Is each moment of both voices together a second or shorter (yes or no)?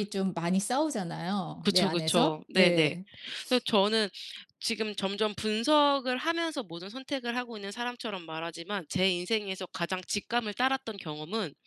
no